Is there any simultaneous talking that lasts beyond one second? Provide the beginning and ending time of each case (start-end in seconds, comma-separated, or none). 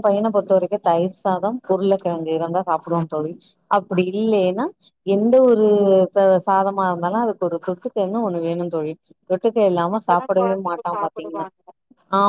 10.0-11.5